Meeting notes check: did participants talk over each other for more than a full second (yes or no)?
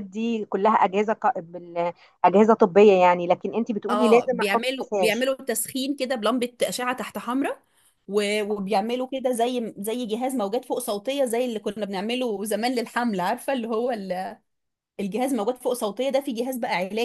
yes